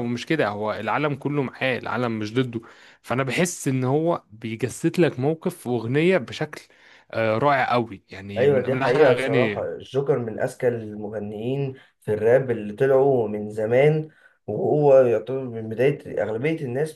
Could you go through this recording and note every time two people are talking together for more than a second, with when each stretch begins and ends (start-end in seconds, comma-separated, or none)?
8.4-9.7